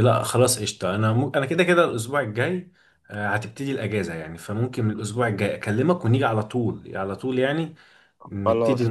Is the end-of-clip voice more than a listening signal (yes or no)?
yes